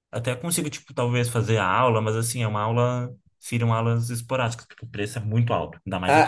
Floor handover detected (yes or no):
yes